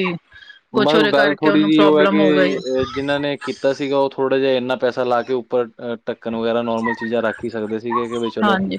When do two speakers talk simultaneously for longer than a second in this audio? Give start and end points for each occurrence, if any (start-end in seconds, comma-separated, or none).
0.8-2.6